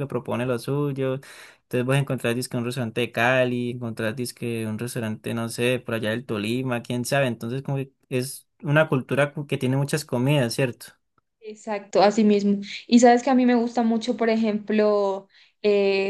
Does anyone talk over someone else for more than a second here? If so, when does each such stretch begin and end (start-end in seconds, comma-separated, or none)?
none